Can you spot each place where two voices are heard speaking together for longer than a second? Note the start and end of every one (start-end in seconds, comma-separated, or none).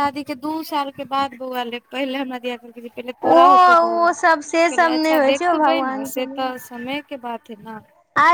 3.4-6.5